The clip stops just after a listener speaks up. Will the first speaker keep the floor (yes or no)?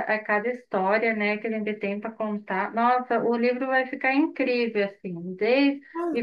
yes